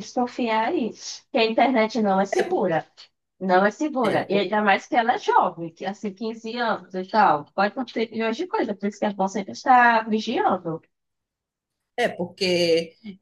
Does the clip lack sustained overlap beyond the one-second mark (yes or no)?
yes